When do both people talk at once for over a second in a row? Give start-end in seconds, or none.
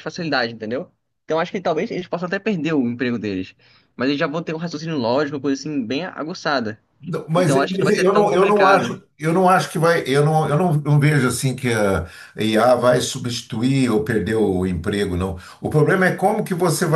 7.3-8.9